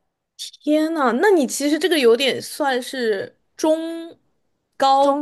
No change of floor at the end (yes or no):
no